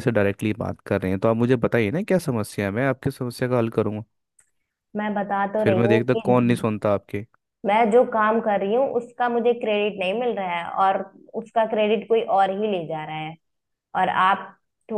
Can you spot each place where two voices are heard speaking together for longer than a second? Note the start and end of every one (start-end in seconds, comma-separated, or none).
none